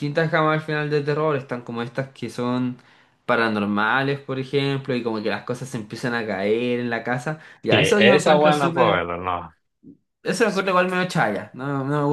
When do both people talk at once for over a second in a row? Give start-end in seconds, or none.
7.7-9.0